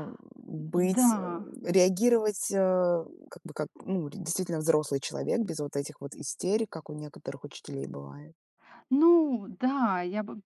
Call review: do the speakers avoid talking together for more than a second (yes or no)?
yes